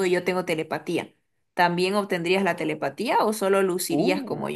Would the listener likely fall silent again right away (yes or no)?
no